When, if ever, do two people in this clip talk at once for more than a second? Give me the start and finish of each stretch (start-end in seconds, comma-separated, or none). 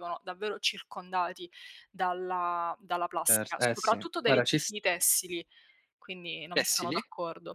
3.3-4.7